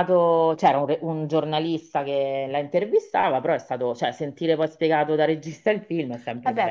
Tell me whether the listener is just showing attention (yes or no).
no